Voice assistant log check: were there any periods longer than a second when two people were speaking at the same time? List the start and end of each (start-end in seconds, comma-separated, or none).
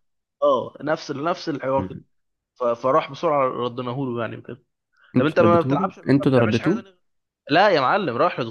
5.2-6.8